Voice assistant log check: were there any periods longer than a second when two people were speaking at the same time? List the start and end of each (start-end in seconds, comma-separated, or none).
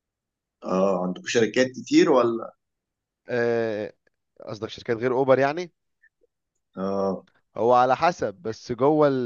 none